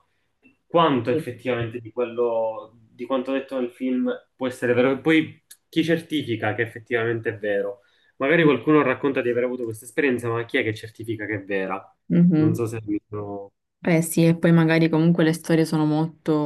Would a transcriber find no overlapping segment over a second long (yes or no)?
yes